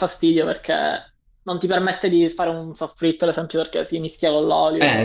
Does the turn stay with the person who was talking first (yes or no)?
no